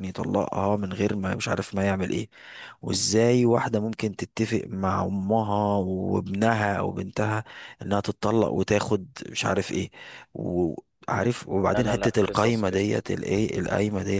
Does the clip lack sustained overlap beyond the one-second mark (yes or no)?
no